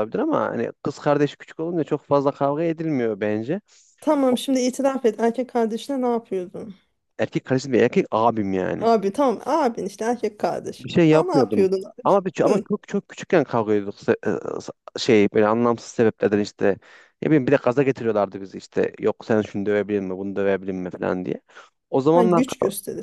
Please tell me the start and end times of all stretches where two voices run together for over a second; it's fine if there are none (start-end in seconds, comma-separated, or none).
10.8-12.7